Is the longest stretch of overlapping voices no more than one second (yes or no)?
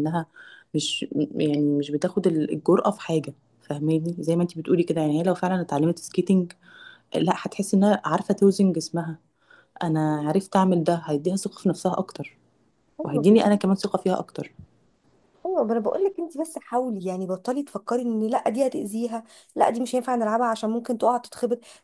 yes